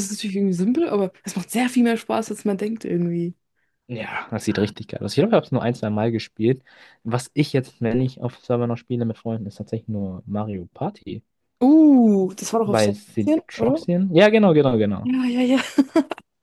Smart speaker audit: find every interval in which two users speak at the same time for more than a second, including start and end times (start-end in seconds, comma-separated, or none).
12.6-13.9